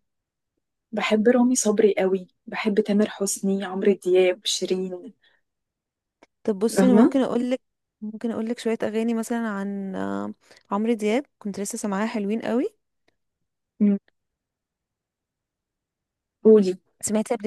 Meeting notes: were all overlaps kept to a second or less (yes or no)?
yes